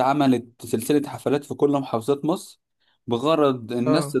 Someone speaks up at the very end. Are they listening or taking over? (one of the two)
listening